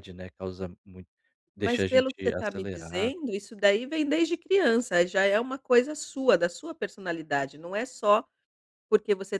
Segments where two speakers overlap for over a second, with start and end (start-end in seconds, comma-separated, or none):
1.6-3.2